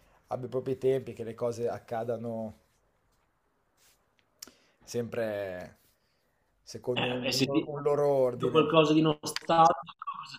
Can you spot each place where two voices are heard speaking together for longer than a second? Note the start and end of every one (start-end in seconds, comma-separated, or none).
none